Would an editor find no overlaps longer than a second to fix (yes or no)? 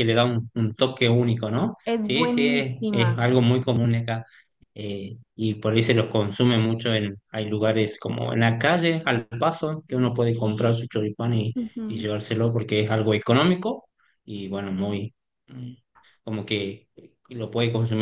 no